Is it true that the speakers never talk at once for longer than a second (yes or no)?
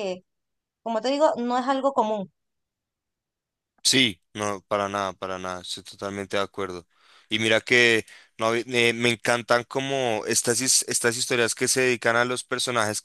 yes